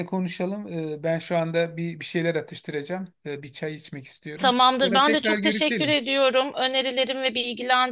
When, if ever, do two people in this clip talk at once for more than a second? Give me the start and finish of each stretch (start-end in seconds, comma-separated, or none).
4.4-6.0